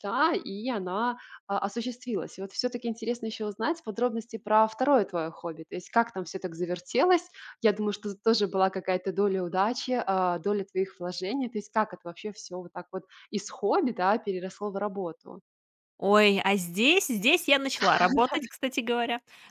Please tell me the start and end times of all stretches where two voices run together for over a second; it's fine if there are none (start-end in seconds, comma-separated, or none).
none